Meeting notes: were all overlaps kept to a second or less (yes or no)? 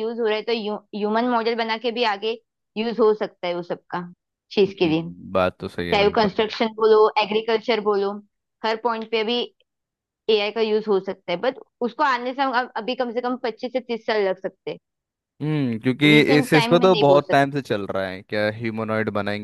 no